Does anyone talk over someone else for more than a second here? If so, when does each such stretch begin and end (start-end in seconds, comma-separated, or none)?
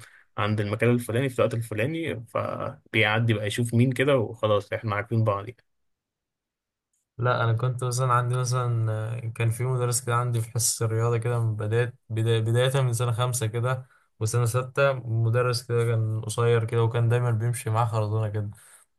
none